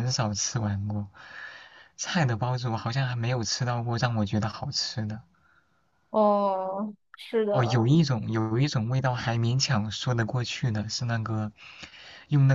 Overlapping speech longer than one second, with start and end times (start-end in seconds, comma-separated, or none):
none